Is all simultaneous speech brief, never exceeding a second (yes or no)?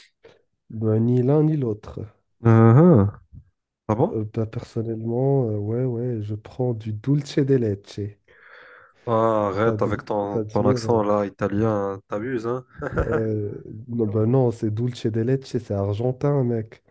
no